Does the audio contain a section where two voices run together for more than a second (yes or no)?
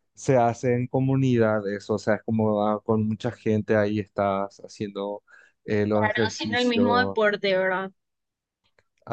yes